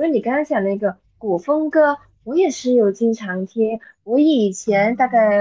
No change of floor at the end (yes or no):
yes